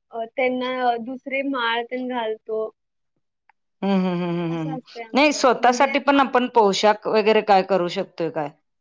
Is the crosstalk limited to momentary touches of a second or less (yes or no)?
no